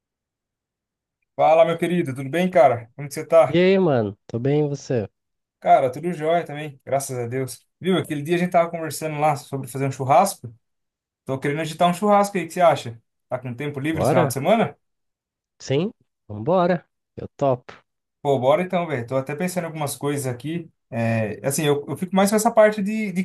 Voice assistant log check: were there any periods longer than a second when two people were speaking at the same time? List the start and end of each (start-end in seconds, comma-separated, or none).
none